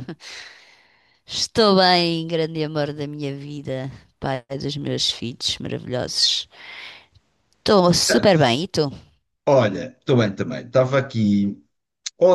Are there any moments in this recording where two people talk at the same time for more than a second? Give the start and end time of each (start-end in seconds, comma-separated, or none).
none